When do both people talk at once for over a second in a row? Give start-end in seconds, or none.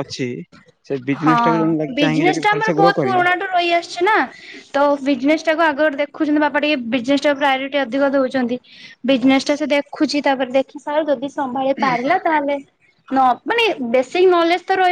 1.2-3.2